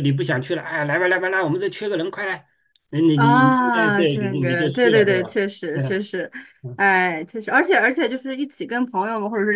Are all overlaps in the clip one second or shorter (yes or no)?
no